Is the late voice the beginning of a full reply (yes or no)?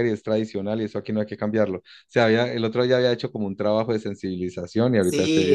yes